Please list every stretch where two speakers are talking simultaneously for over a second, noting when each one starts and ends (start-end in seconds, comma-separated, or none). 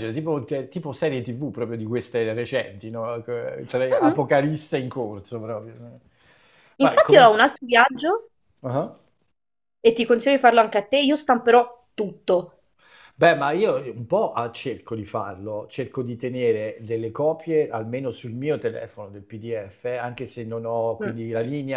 none